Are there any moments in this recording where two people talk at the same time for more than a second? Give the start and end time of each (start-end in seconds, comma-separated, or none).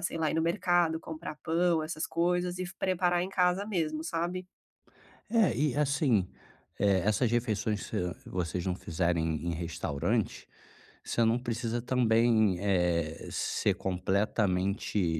none